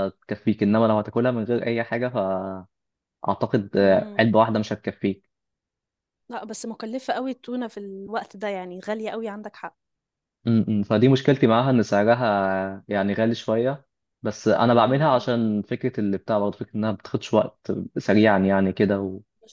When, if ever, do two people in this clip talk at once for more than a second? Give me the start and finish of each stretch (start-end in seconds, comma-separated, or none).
none